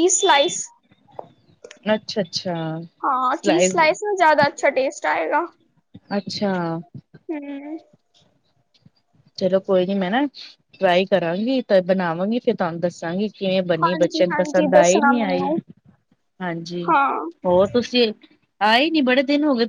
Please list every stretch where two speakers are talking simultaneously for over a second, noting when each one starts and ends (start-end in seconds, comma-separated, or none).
13.8-15.5